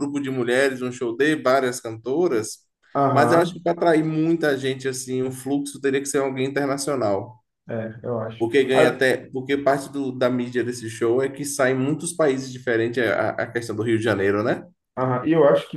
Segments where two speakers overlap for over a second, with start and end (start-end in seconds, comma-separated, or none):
none